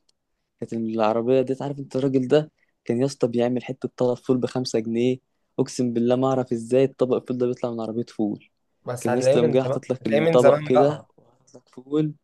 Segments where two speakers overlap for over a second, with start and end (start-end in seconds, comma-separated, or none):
9.0-11.1